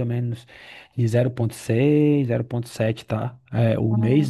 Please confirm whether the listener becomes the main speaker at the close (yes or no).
no